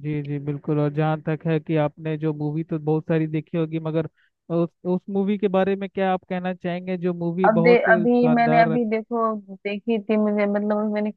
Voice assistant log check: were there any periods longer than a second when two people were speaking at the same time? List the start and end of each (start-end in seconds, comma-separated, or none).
7.5-8.9